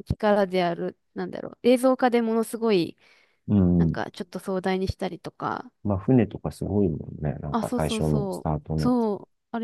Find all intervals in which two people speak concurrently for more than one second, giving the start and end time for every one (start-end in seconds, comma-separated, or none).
7.5-8.9